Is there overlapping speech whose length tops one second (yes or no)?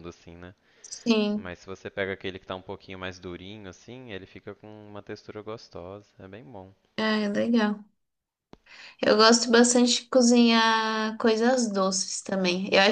no